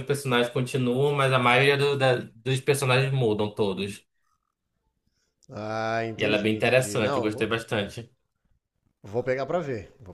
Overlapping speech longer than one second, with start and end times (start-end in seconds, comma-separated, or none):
6.2-7.6